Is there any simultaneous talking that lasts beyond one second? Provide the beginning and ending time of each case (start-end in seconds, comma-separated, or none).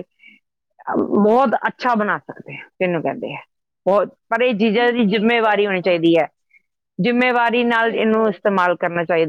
4.6-6.0